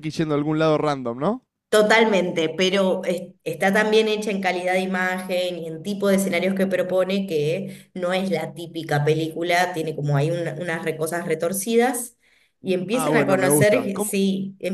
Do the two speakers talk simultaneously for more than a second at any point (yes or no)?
yes